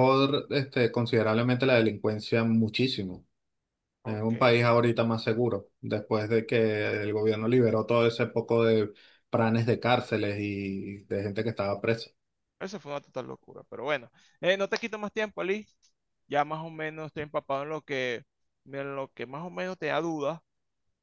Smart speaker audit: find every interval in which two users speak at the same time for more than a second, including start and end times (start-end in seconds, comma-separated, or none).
none